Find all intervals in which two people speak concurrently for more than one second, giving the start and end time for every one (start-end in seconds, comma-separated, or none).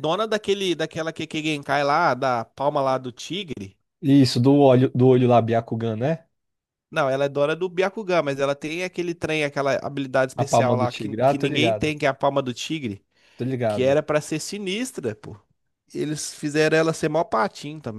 10.4-11.9